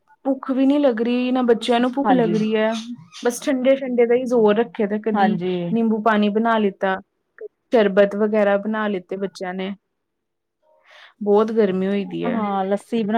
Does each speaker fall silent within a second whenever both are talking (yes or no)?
yes